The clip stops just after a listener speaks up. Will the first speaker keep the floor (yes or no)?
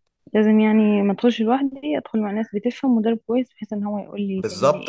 no